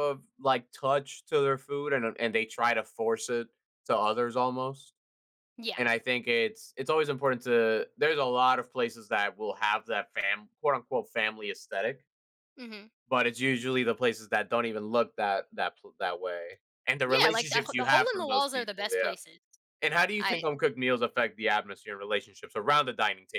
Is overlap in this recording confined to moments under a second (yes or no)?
no